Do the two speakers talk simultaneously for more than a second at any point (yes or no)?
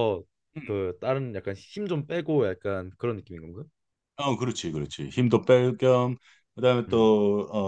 no